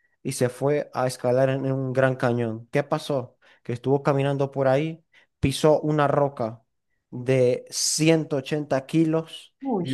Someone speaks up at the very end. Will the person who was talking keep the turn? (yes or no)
yes